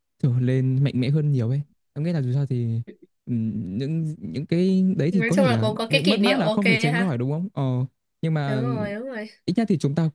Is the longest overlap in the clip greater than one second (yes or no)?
yes